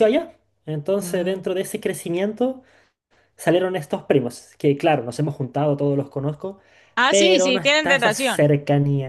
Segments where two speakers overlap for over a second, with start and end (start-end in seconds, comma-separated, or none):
7.1-8.5